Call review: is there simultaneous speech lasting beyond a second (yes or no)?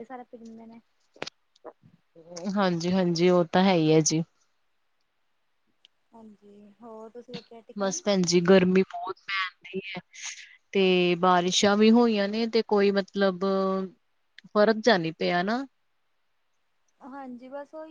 no